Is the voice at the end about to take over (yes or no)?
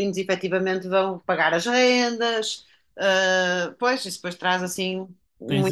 yes